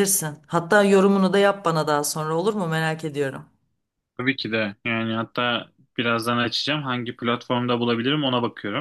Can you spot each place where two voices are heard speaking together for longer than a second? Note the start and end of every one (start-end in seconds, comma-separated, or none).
none